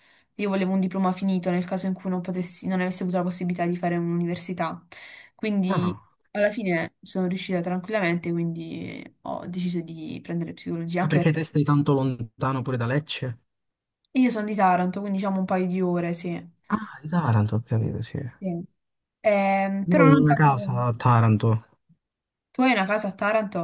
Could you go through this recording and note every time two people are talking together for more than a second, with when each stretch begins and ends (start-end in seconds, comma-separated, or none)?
none